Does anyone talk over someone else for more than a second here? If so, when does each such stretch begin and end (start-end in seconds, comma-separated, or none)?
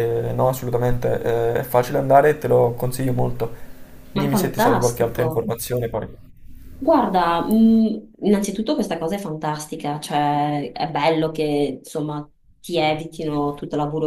4.1-5.5